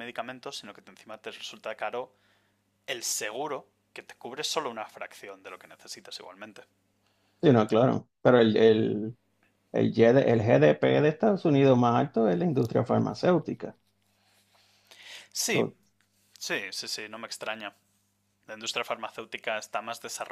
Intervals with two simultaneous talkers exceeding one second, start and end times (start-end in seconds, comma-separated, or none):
none